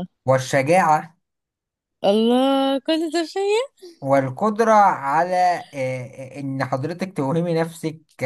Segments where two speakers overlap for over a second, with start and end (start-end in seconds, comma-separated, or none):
none